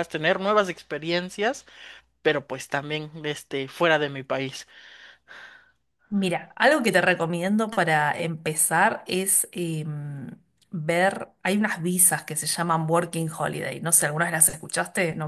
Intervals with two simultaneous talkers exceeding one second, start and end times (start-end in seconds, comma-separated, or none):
none